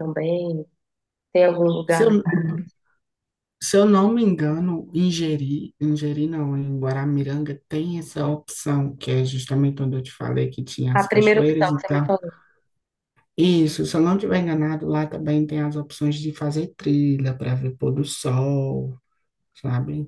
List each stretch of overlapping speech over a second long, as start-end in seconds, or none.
10.9-12.1